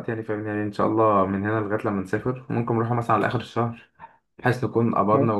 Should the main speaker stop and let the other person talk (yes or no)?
no